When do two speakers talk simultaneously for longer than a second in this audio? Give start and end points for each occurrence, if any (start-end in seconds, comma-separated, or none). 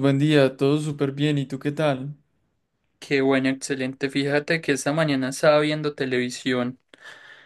none